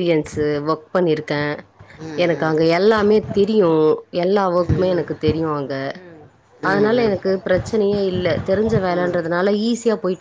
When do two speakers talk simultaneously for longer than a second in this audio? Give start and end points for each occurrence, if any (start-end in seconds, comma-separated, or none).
none